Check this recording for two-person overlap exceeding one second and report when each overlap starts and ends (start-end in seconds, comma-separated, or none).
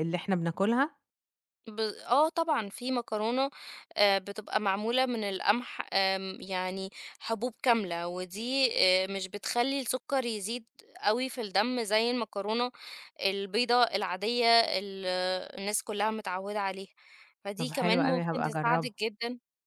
17.6-18.9